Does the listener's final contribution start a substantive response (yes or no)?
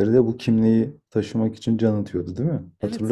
yes